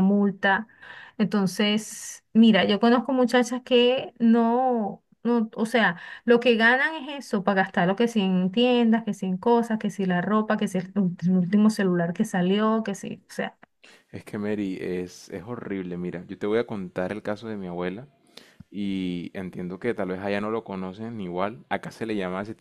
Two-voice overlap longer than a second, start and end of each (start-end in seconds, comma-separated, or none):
none